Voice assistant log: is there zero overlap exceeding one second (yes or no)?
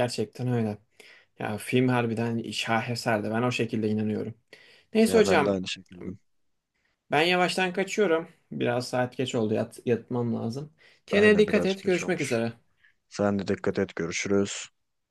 no